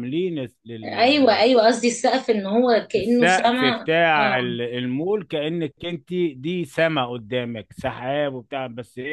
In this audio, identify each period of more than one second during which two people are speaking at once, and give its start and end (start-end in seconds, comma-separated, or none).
3.0-4.5